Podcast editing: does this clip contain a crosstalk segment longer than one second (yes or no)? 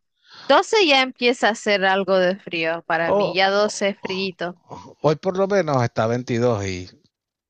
yes